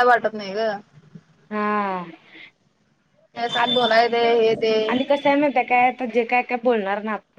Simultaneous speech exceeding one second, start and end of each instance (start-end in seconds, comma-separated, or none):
none